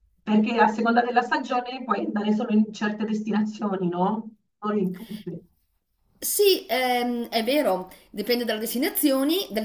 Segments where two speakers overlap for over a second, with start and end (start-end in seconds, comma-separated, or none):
none